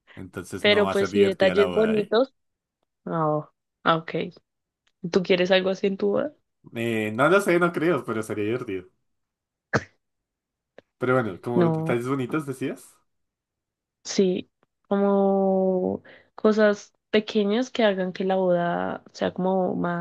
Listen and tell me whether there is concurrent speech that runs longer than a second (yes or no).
yes